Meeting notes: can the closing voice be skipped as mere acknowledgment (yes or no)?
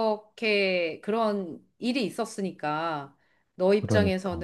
yes